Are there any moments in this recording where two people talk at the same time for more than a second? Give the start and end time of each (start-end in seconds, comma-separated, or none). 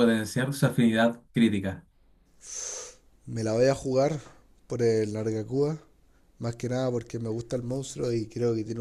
none